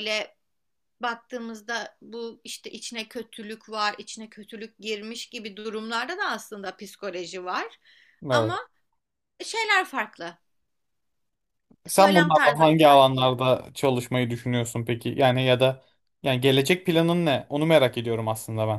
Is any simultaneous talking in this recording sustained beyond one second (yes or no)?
yes